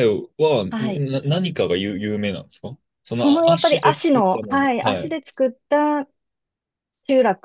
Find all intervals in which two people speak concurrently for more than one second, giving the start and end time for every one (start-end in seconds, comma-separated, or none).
3.1-5.2